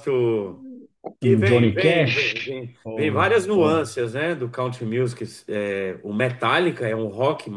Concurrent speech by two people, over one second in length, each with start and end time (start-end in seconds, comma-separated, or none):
1.2-3.9